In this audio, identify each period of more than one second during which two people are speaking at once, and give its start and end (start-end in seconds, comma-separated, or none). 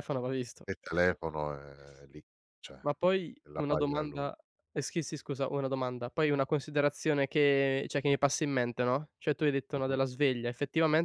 2.8-4.3